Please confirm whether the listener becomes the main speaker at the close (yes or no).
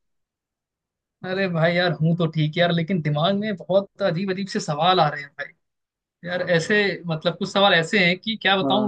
no